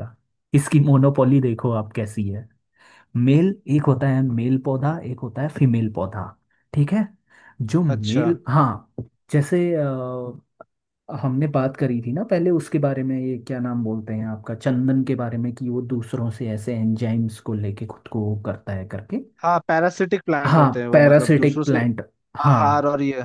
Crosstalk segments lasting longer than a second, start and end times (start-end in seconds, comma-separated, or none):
20.4-21.8